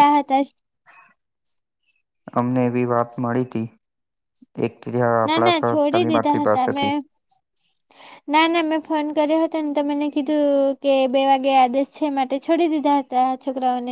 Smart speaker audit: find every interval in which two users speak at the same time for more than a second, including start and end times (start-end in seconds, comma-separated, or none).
5.3-6.9